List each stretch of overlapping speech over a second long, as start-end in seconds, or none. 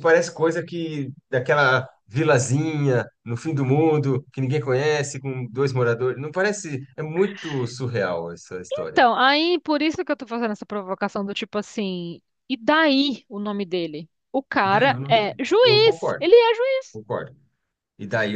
14.6-16.3